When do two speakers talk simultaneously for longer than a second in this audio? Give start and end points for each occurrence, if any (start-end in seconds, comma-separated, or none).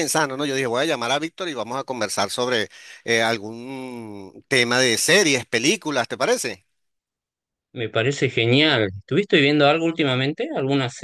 none